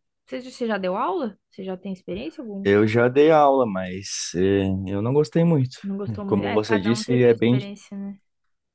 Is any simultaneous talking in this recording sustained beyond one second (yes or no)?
yes